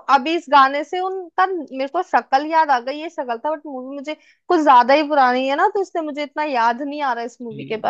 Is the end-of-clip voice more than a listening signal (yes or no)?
yes